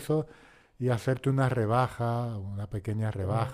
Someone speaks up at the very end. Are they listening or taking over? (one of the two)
taking over